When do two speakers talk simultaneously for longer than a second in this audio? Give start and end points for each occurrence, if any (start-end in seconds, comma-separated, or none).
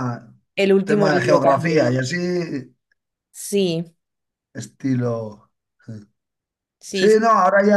0.8-2.1